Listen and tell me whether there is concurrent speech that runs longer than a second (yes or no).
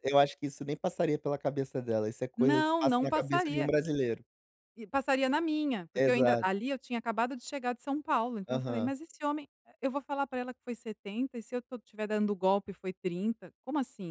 yes